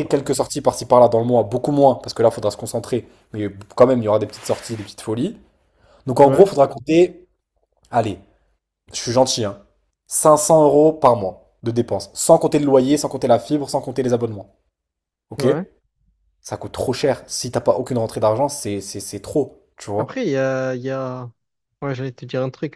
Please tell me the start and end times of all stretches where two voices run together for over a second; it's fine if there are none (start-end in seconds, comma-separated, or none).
none